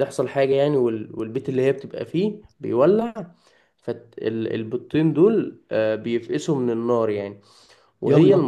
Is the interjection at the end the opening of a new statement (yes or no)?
no